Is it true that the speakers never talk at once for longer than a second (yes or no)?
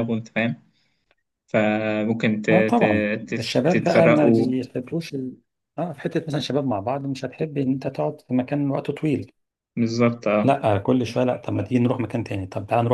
no